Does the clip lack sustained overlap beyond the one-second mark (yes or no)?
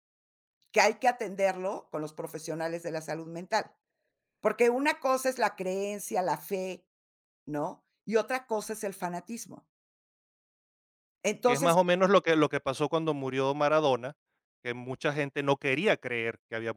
yes